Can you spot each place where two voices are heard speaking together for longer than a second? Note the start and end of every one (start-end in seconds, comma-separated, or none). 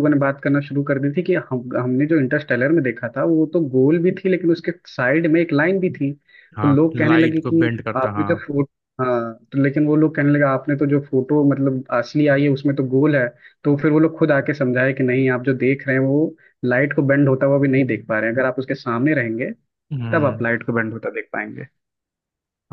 6.6-8.4